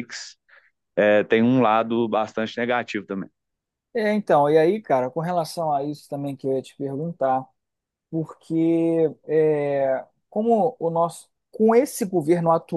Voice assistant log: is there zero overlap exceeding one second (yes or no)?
yes